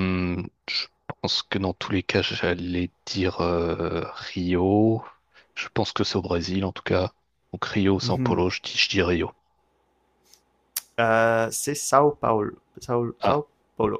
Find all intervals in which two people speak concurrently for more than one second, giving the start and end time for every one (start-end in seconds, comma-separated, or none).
none